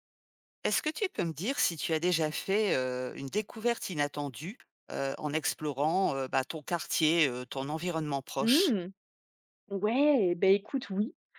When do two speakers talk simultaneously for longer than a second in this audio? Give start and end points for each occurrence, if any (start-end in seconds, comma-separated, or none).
none